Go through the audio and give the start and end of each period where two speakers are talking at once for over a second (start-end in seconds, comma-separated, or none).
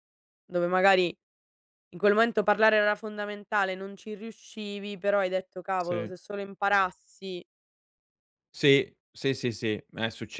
none